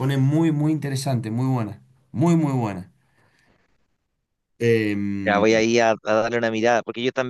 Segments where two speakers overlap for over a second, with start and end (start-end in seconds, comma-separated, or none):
none